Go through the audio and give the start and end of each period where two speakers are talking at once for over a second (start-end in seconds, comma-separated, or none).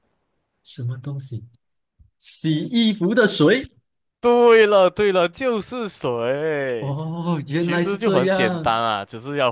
7.6-8.8